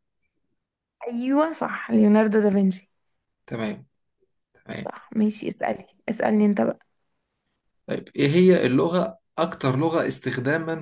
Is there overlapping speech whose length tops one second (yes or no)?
no